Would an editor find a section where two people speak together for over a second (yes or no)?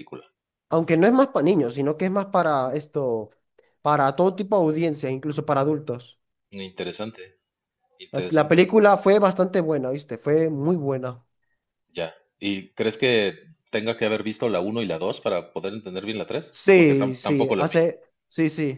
yes